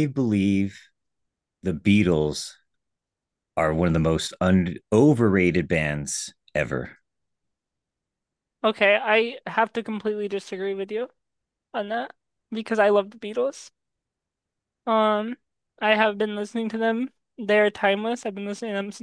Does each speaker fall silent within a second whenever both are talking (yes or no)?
yes